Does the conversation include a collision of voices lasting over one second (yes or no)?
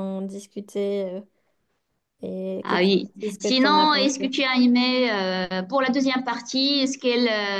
yes